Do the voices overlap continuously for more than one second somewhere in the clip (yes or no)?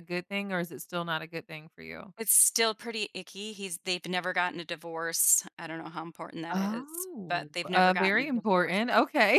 yes